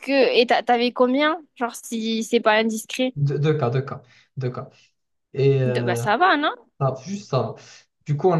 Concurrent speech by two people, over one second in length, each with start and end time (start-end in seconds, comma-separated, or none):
none